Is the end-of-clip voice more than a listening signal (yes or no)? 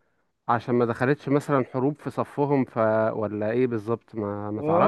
yes